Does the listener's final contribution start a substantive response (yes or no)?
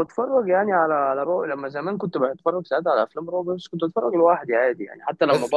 no